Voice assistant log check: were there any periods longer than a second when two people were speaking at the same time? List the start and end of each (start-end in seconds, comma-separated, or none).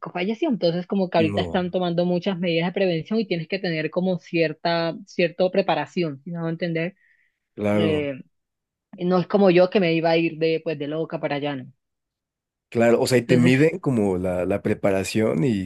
none